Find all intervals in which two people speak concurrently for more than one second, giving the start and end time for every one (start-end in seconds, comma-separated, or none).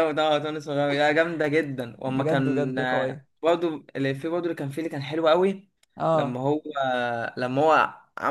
2.1-3.3